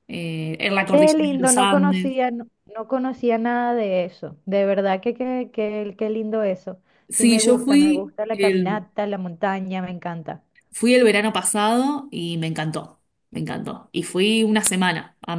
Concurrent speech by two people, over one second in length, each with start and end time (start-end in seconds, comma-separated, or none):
0.8-2.1, 7.1-8.9